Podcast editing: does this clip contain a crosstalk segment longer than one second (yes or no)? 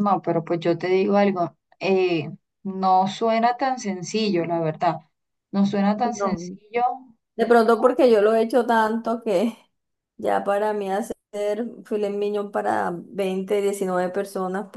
no